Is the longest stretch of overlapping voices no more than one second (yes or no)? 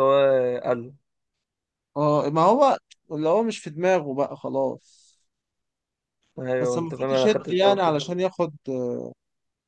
no